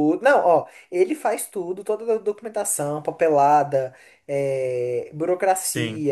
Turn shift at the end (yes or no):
no